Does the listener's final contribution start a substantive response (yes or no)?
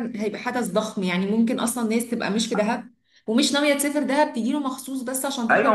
yes